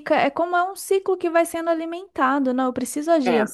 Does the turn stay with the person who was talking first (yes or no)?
yes